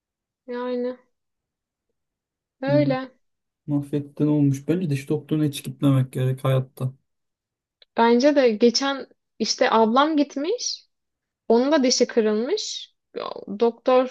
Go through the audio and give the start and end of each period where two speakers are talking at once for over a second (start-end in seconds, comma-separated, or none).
none